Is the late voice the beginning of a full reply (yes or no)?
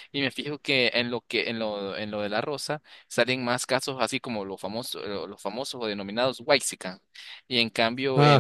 no